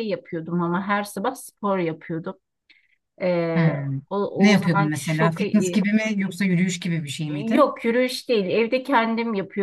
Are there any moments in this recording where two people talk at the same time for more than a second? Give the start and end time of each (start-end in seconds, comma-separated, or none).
4.5-5.8